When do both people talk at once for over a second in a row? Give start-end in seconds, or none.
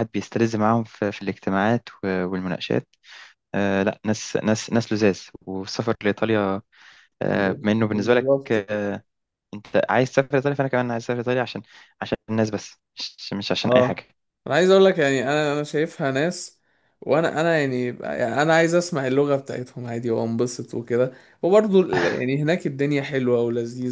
7.3-8.7